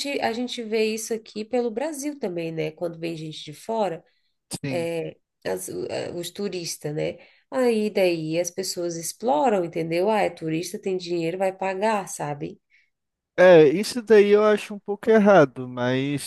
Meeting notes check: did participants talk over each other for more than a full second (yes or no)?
no